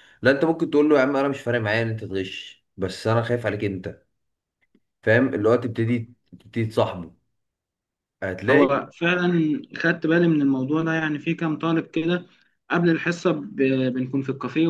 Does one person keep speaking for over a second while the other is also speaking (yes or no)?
no